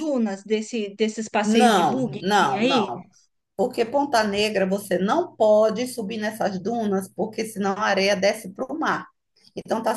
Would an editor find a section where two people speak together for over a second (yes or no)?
yes